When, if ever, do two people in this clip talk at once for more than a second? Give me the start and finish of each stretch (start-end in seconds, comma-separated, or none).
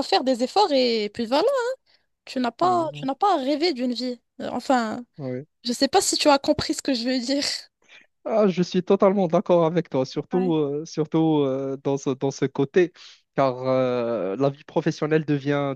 none